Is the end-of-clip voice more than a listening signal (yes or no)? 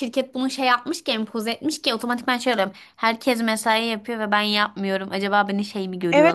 yes